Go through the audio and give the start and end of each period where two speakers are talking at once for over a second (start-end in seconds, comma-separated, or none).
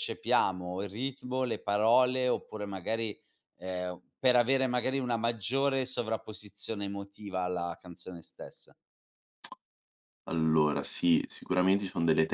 none